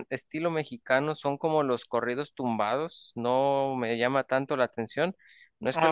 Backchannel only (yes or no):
yes